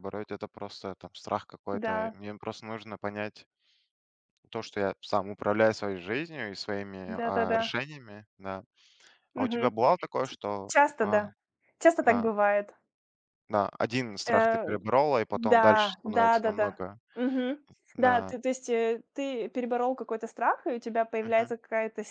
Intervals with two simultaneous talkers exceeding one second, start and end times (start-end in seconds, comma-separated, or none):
15.3-17.0